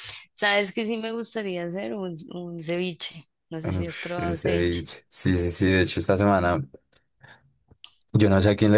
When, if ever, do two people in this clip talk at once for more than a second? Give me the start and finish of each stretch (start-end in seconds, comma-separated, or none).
3.6-4.8